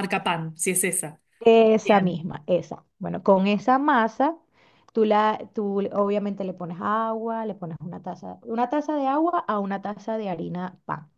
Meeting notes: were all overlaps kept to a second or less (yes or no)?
yes